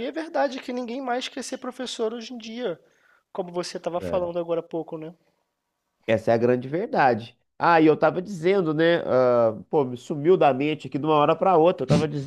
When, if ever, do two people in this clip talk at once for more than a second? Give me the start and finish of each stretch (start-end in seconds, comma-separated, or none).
none